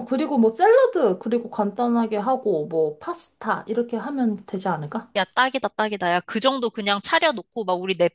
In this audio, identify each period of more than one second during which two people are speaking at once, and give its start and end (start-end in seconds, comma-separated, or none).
none